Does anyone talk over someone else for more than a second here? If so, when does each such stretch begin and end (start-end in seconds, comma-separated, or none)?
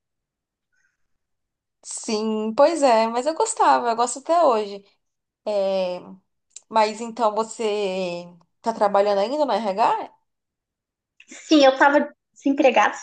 none